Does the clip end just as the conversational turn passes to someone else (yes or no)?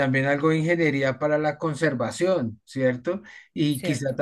no